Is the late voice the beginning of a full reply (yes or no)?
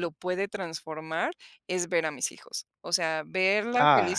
no